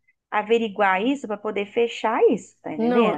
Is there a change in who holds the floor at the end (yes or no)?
yes